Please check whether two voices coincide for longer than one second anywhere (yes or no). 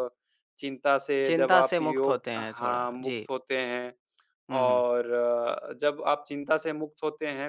yes